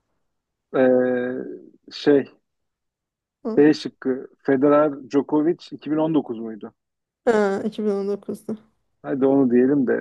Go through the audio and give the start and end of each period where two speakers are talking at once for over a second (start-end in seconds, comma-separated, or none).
none